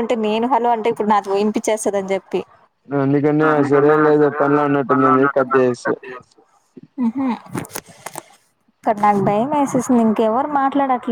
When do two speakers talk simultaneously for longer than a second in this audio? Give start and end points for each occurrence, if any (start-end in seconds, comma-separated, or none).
3.5-6.0